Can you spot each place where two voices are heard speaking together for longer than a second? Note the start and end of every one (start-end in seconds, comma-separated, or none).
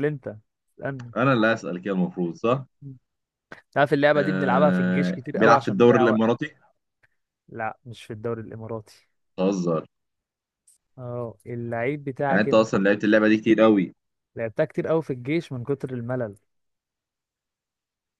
4.2-6.3